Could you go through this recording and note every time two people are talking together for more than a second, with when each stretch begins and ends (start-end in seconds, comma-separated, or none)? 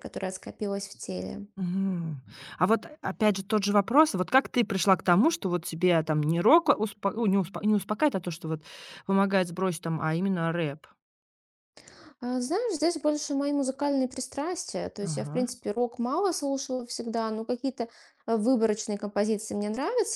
none